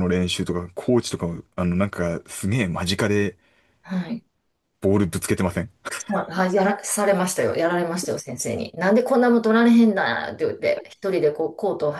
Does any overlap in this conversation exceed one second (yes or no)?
no